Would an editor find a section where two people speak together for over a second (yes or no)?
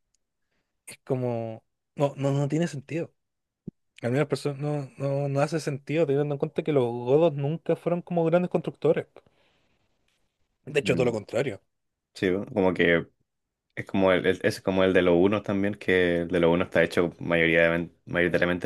no